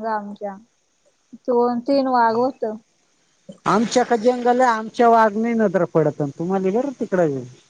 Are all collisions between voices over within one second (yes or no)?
yes